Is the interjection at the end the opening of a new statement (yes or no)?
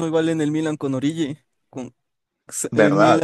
no